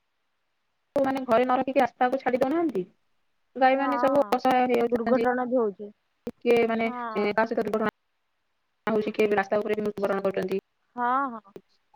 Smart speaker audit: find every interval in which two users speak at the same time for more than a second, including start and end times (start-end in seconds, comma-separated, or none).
none